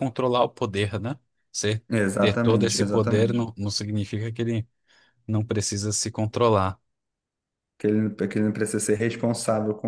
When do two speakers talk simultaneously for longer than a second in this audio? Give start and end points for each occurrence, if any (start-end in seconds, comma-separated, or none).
2.2-3.5